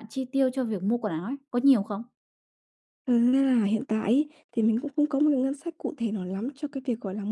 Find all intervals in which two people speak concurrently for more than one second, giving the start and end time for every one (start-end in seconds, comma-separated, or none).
none